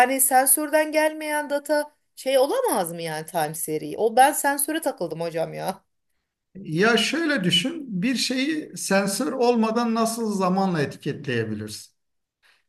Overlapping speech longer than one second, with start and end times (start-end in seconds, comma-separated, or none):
none